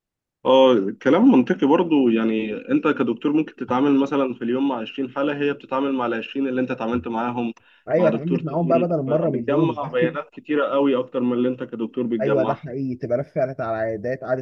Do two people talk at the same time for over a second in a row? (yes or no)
yes